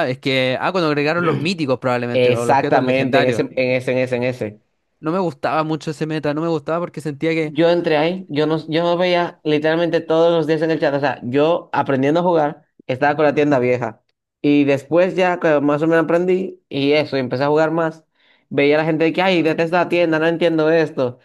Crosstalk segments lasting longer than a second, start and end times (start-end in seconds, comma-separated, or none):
2.1-3.5